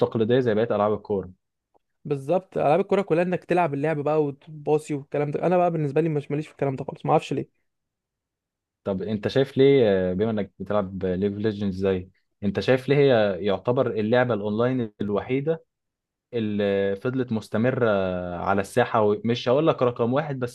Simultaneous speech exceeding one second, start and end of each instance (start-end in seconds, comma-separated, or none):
none